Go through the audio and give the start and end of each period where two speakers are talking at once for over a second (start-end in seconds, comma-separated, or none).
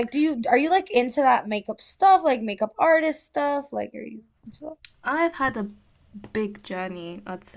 none